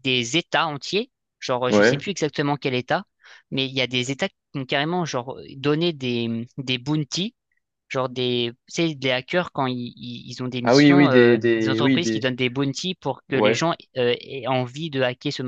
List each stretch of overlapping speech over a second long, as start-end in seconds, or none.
10.6-12.3